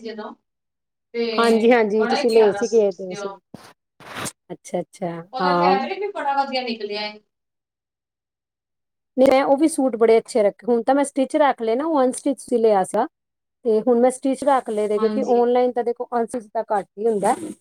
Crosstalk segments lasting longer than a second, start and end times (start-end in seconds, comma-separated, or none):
1.4-3.3